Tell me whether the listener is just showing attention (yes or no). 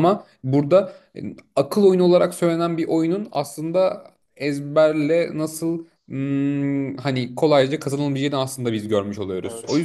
no